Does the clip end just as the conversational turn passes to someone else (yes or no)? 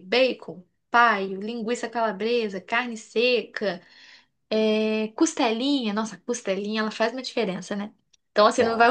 no